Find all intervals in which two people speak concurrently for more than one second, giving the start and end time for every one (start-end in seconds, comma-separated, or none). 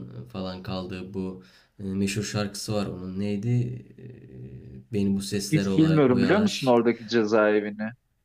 5.5-6.7